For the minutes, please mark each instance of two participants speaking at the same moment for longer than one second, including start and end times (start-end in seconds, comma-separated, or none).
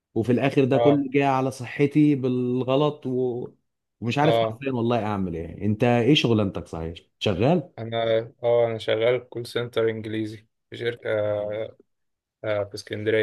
none